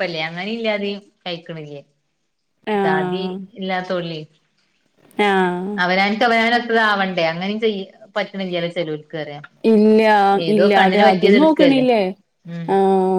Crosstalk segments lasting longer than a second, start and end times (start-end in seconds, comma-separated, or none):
10.6-11.8